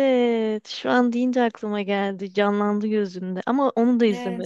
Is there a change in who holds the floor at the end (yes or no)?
yes